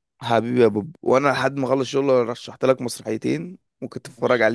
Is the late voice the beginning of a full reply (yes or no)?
yes